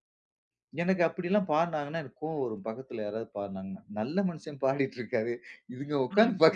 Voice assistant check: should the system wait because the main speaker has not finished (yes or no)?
yes